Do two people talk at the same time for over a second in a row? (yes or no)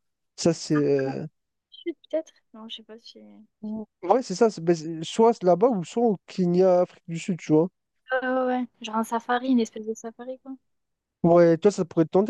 no